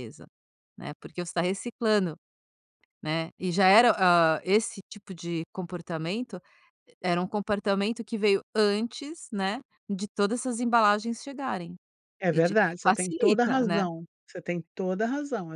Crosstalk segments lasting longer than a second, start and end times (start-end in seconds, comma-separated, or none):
12.3-13.8